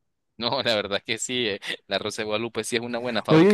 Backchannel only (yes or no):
no